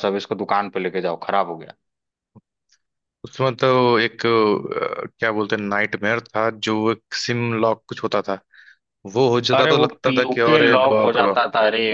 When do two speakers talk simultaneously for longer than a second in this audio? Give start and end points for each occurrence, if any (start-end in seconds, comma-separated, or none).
9.5-11.4